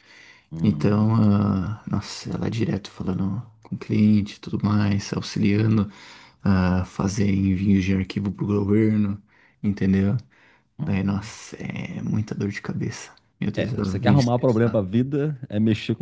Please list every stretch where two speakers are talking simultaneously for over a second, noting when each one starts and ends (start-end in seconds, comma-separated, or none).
13.5-14.8